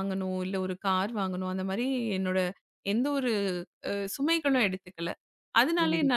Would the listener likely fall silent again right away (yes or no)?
yes